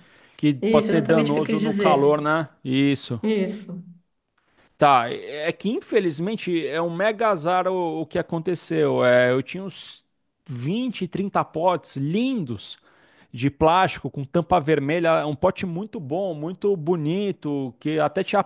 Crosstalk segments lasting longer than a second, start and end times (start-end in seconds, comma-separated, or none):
0.6-2.2